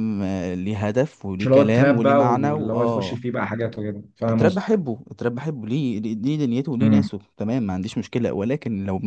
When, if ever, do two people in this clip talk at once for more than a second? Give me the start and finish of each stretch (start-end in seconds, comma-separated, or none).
1.4-3.2